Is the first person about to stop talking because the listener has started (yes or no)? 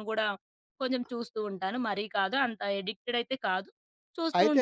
no